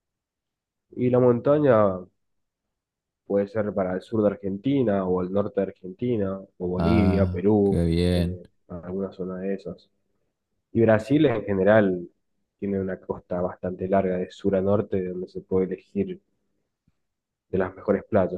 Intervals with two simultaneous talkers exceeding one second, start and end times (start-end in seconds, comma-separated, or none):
6.8-8.4